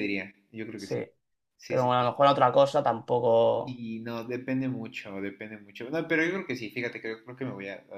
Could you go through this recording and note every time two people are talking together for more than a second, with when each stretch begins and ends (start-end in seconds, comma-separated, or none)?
none